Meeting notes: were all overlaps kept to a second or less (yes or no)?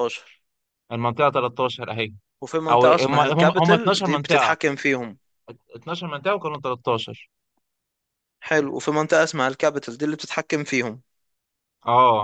no